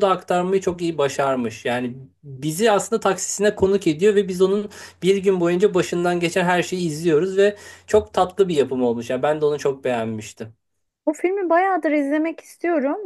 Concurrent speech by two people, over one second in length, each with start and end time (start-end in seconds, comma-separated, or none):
none